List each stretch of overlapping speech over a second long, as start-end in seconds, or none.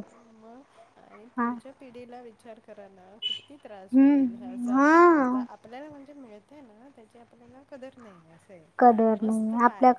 3.9-5.4